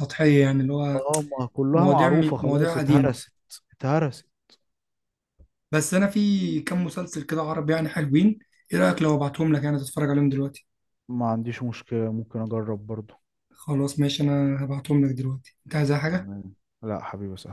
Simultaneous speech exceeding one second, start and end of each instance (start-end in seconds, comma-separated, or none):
1.7-3.2